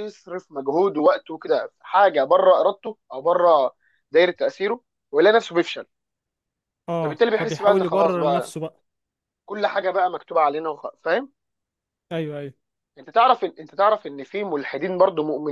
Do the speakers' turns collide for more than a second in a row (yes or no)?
yes